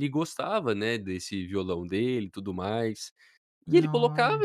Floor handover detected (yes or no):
no